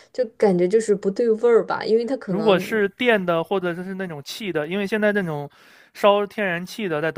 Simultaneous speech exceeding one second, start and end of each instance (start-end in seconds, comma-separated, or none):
none